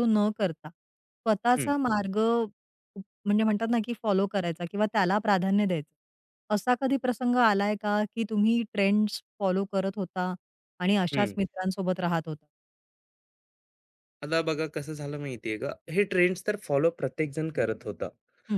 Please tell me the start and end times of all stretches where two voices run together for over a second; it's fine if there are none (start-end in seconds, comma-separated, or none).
none